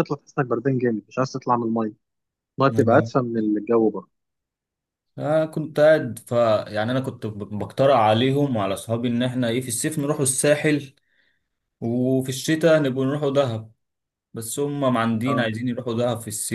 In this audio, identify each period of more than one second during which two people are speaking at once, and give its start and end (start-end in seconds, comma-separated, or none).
none